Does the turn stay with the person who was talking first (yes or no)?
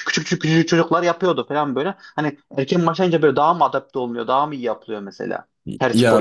no